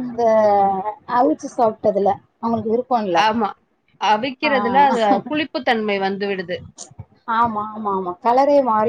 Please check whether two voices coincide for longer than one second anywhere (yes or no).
no